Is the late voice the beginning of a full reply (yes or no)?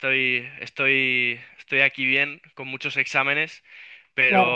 no